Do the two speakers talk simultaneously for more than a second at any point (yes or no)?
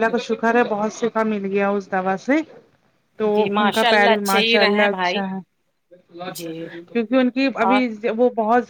yes